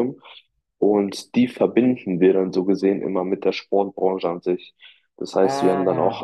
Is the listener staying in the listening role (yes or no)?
yes